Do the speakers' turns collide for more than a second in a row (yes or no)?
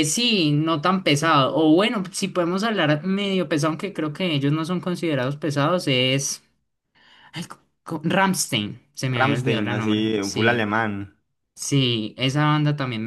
yes